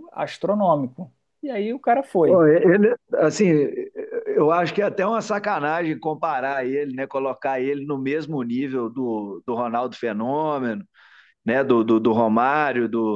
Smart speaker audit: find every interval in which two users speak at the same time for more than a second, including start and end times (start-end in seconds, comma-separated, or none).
none